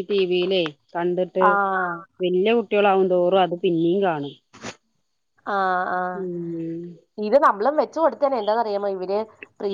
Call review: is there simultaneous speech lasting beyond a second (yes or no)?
no